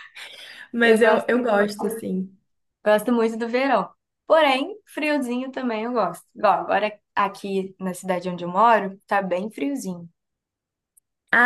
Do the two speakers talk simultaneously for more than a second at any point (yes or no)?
yes